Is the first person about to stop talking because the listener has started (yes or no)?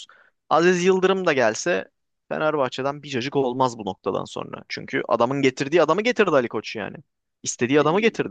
yes